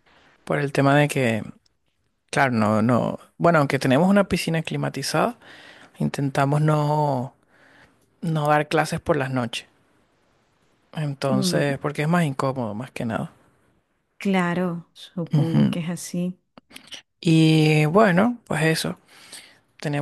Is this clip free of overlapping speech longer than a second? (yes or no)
yes